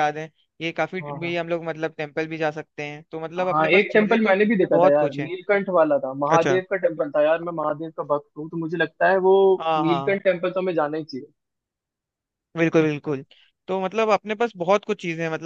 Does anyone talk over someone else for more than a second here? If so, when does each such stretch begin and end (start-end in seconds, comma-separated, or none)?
3.5-5.3